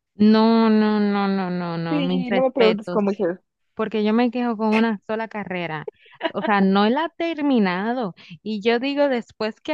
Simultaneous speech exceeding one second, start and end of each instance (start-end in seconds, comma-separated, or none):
1.9-3.2